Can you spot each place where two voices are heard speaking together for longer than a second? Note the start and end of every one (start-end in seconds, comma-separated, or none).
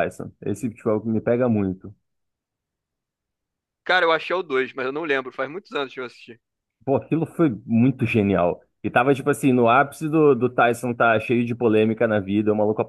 none